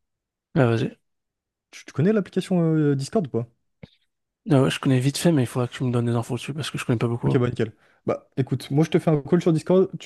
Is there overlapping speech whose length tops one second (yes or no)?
no